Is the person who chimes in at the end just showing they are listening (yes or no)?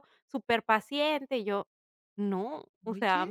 yes